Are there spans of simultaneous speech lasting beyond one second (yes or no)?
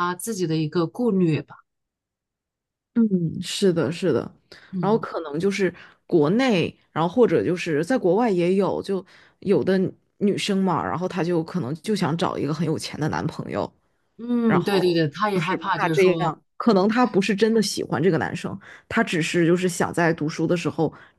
yes